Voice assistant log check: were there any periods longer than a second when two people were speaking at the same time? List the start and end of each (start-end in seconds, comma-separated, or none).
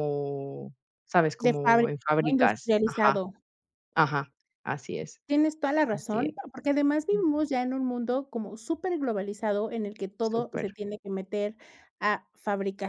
1.4-3.2